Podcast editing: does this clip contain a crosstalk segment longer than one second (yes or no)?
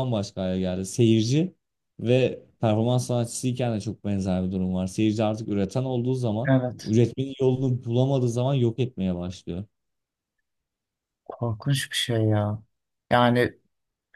no